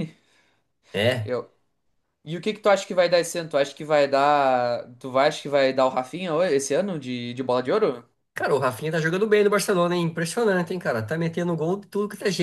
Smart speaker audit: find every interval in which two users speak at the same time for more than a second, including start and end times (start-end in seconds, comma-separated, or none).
none